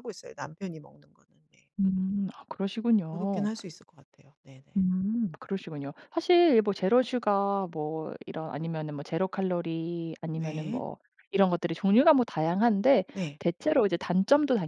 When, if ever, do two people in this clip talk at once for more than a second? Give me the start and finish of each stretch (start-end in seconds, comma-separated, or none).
none